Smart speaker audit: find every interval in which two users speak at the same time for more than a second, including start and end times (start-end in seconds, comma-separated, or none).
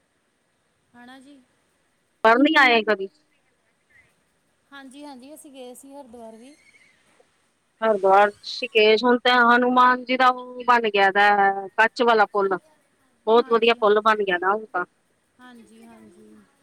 none